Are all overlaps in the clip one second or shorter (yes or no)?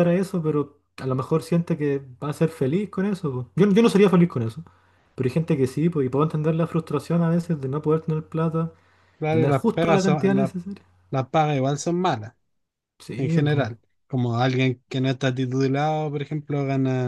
no